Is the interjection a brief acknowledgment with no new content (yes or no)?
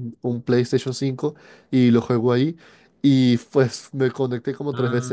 yes